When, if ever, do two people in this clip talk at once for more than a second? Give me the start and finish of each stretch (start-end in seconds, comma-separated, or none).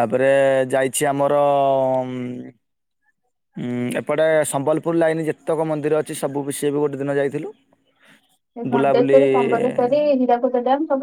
8.7-9.9